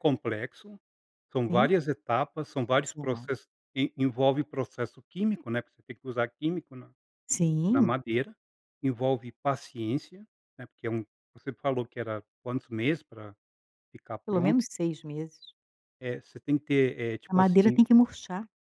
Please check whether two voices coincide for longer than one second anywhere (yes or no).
no